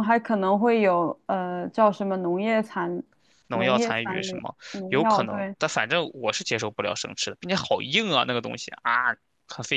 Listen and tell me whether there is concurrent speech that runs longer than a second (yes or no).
yes